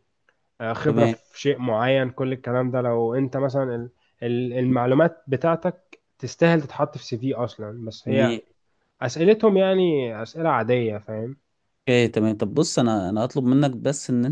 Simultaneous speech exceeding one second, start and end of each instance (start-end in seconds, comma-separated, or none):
none